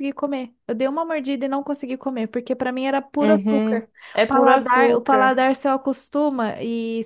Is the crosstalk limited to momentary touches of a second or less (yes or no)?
no